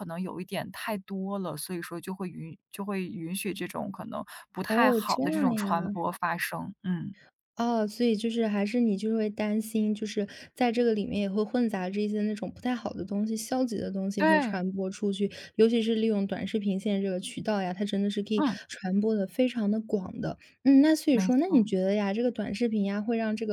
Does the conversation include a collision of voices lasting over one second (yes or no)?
yes